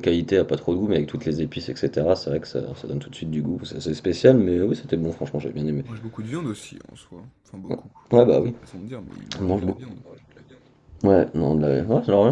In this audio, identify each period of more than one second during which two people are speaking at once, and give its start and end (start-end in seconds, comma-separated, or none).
none